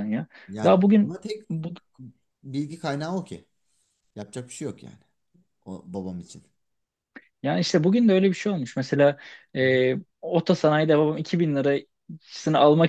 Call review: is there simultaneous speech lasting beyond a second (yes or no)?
no